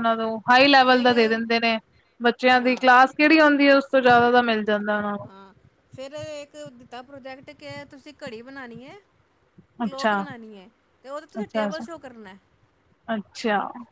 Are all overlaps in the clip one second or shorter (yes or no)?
yes